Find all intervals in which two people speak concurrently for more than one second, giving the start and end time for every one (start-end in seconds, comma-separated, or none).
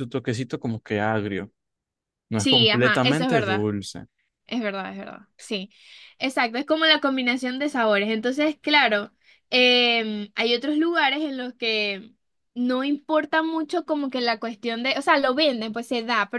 2.4-3.6